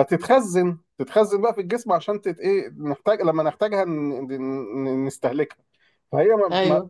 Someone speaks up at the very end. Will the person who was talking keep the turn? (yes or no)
yes